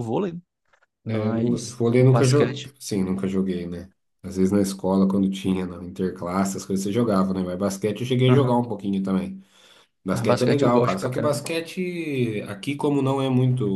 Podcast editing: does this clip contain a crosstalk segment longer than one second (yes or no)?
yes